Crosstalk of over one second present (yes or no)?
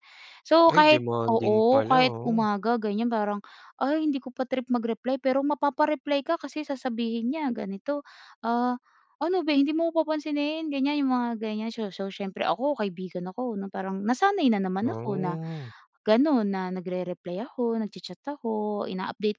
yes